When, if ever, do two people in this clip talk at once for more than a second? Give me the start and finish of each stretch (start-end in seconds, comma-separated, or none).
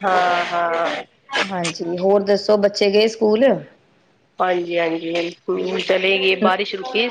none